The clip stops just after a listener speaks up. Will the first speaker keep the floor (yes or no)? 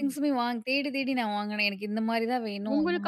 no